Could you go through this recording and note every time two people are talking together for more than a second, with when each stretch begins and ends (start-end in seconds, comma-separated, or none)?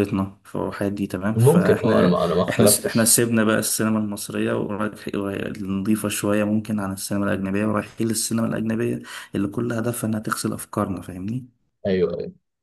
1.4-3.1